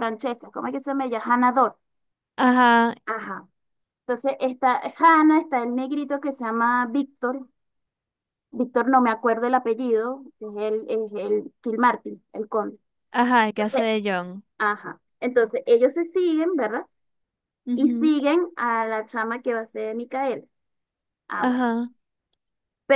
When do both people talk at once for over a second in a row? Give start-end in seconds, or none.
none